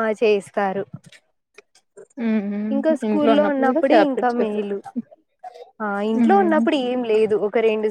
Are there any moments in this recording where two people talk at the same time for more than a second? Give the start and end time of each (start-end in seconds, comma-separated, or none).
3.1-4.7